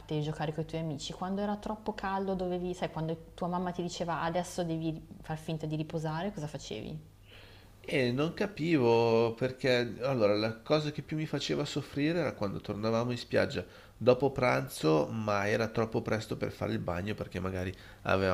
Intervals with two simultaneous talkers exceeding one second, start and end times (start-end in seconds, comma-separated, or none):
none